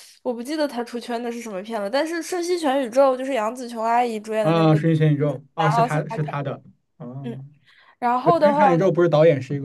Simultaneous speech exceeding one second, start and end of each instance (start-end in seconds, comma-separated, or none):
none